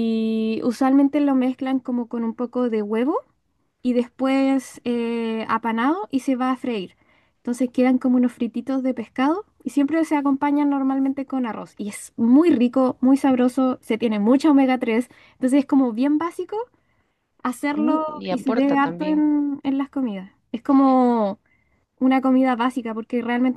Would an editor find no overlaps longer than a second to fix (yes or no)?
no